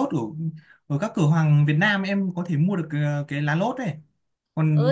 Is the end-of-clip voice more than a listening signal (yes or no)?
yes